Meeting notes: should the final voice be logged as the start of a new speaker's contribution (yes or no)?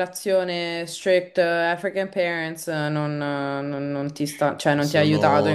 yes